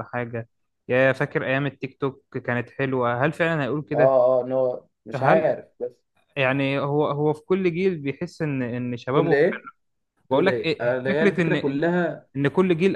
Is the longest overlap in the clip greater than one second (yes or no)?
yes